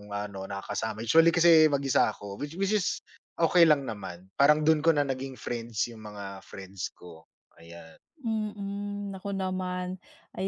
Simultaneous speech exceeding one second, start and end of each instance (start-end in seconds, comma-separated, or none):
none